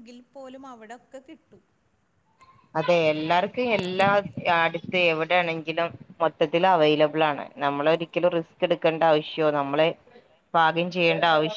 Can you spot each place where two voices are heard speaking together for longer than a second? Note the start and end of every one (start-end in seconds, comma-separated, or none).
none